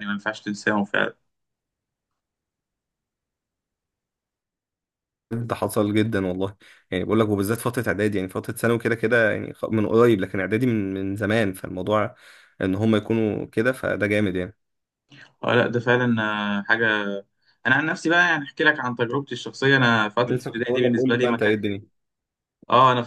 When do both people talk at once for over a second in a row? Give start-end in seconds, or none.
20.3-21.6